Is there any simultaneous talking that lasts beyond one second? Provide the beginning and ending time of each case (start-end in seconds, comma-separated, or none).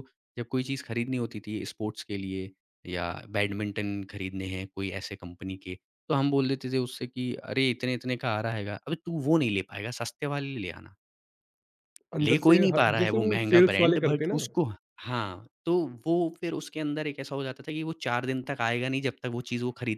12.2-14.4